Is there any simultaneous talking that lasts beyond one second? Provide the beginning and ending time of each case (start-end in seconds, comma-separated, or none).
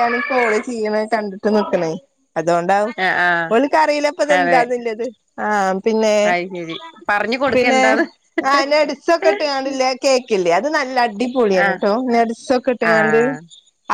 none